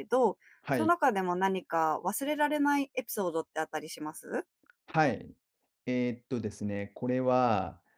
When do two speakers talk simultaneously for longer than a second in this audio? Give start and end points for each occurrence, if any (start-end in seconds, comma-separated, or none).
none